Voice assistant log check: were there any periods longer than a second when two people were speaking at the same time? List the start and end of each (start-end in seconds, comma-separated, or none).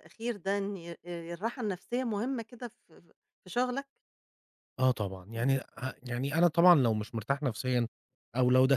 none